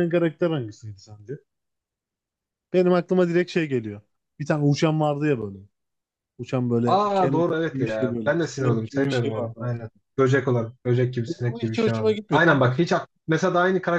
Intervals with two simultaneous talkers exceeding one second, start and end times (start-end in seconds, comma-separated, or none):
6.9-9.7, 11.3-12.8